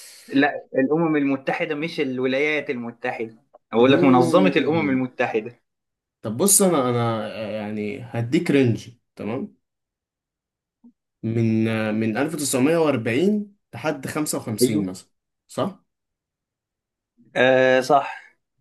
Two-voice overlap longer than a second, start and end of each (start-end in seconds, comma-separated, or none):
3.8-5.0